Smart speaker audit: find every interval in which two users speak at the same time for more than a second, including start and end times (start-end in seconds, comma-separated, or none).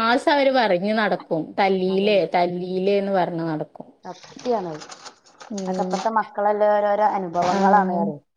none